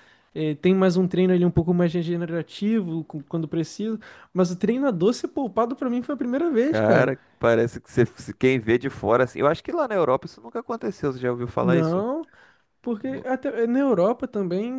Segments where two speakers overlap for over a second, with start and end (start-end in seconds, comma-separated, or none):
none